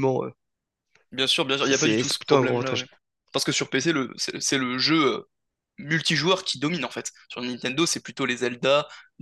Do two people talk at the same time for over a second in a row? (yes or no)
yes